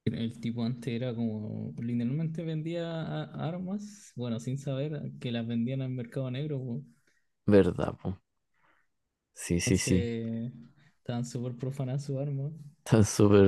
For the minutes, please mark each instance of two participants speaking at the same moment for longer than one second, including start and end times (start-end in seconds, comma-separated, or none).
none